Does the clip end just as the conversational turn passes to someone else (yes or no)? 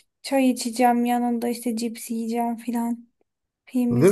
yes